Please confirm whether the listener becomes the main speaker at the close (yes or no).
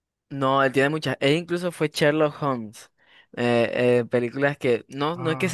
no